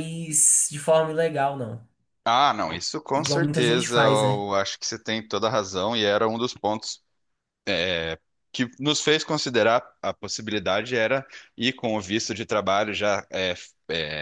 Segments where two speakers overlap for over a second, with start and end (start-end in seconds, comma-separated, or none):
3.1-4.5